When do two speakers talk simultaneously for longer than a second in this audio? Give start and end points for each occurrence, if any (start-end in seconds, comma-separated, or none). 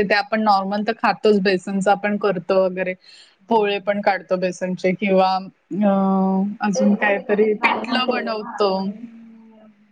6.8-8.7